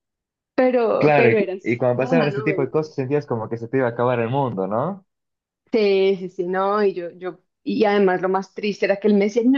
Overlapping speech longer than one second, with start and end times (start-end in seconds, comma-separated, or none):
1.0-2.7